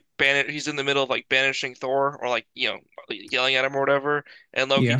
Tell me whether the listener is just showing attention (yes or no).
yes